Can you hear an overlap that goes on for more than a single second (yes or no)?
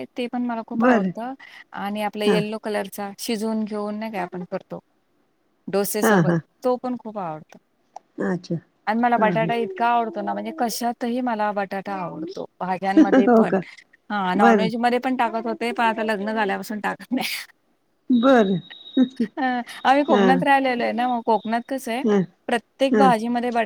no